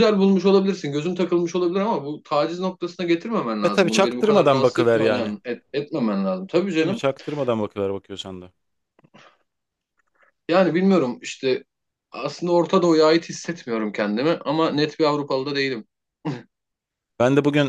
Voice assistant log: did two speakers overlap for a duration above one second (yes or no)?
yes